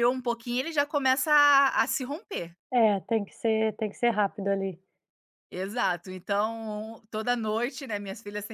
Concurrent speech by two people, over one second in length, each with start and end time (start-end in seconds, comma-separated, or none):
none